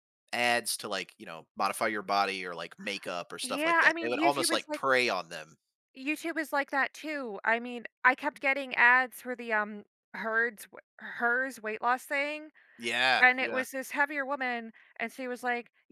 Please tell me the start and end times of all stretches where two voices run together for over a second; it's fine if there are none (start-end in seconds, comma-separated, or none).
3.4-4.8